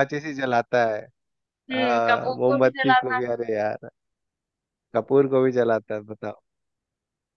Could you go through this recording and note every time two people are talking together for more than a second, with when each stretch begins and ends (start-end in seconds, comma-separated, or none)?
1.7-3.2